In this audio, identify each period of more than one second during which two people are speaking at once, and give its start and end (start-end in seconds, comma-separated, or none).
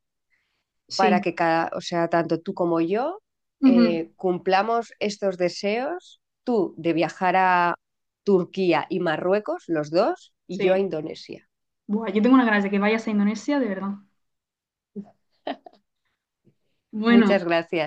none